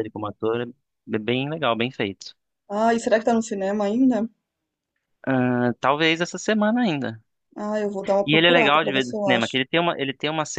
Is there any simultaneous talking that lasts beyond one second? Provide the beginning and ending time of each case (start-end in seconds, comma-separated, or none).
8.2-9.6